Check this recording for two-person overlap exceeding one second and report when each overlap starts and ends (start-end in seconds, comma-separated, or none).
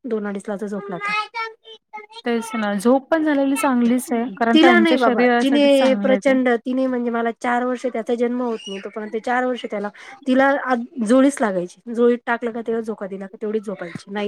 4.5-6.3